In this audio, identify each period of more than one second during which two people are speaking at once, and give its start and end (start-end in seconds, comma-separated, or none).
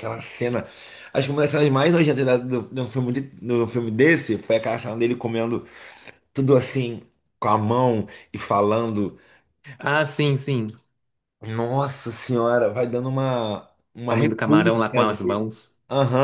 14.1-15.5